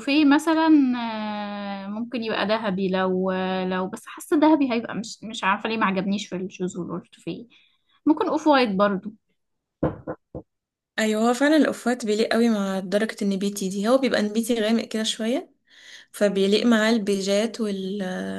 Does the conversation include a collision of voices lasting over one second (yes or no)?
no